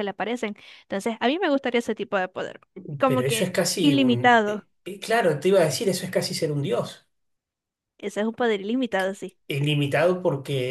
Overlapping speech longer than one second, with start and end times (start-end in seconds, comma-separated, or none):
3.0-4.7